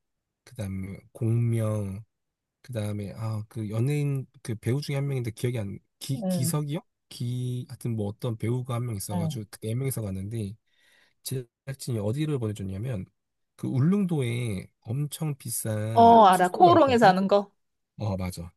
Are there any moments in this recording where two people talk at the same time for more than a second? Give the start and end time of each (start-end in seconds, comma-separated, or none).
15.9-17.1